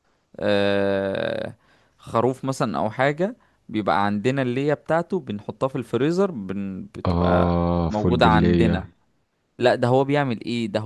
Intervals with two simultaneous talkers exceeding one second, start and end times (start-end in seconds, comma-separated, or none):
7.1-8.8